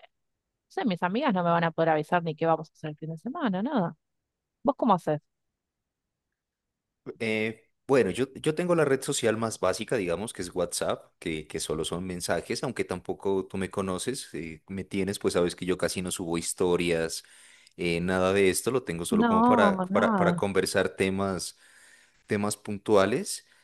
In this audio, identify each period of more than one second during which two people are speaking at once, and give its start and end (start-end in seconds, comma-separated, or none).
19.1-20.4